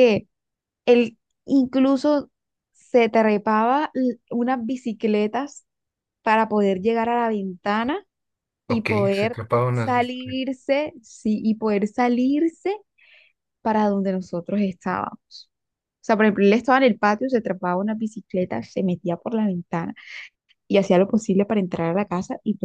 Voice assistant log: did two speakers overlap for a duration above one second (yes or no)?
yes